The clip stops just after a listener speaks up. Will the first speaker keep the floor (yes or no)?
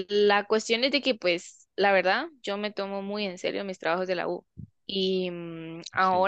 yes